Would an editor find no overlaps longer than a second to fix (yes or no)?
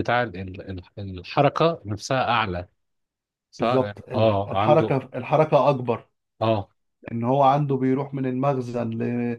no